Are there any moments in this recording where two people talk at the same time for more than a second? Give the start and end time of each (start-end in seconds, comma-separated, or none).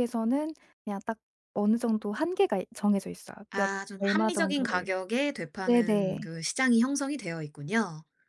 3.5-4.9